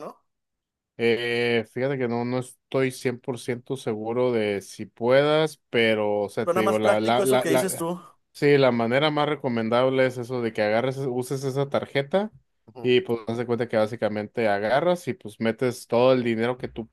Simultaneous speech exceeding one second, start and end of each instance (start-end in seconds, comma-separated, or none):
6.4-7.9